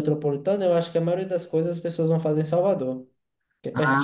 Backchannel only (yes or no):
no